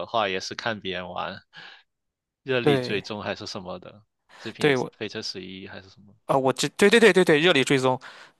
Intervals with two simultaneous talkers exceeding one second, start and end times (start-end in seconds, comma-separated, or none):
none